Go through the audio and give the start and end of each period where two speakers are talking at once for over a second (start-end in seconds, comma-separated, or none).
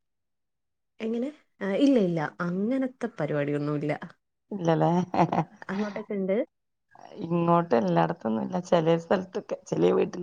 none